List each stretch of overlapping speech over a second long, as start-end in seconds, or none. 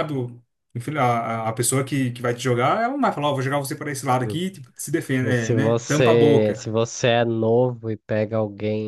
5.2-6.7